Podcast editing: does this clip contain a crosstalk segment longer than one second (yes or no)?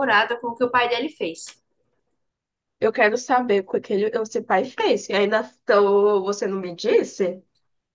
no